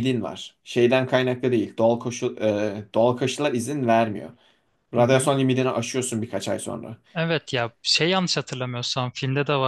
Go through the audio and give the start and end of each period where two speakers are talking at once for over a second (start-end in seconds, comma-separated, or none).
none